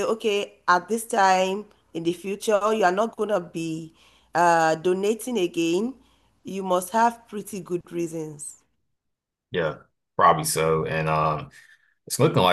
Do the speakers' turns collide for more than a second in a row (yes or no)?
no